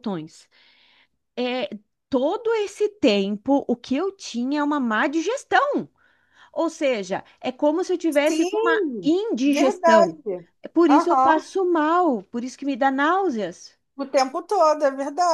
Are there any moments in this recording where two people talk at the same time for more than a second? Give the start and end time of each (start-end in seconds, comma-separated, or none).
8.3-10.2